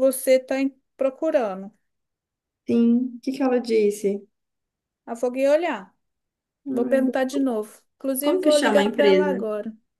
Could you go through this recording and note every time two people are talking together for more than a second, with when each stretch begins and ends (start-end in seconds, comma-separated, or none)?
8.2-9.4